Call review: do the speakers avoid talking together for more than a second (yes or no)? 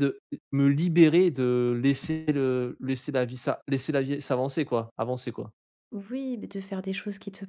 yes